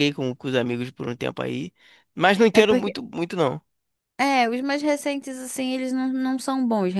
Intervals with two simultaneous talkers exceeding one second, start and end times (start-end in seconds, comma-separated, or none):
none